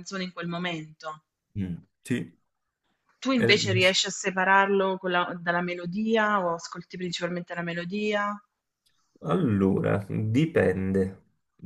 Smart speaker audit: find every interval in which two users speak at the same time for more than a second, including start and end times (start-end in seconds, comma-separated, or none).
none